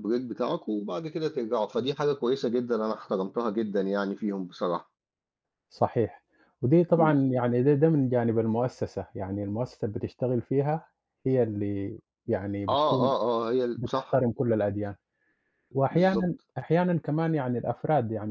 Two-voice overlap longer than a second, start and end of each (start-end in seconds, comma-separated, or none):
none